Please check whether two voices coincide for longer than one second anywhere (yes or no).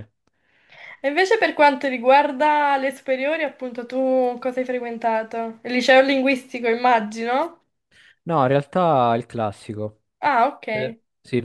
no